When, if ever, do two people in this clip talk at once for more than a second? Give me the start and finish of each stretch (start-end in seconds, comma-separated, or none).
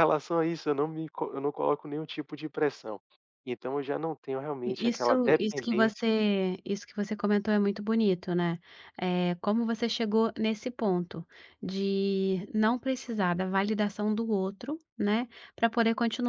4.6-6.0